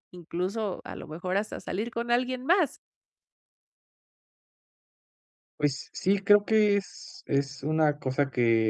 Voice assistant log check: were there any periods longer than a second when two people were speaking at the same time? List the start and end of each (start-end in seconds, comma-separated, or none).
none